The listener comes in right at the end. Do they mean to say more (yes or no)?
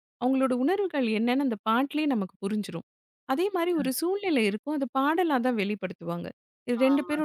no